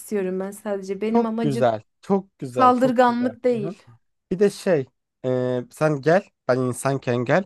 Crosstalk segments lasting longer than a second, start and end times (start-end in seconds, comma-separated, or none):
2.5-3.7